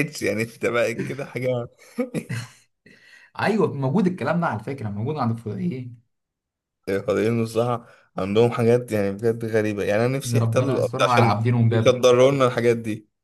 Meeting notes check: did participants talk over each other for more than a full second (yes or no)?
yes